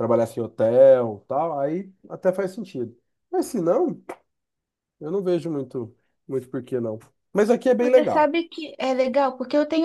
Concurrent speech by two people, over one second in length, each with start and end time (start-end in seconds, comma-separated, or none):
none